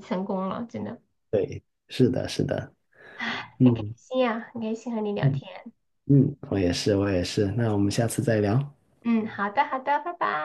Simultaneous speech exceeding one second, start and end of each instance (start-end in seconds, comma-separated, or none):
none